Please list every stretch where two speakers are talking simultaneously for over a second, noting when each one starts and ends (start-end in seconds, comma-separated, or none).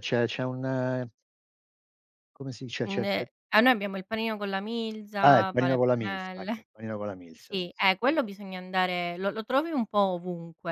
5.2-6.7, 7.3-8.8